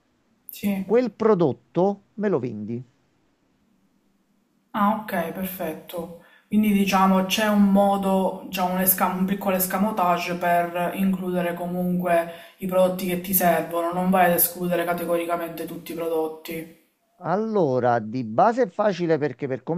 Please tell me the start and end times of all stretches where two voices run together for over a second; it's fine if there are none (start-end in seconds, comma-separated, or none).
none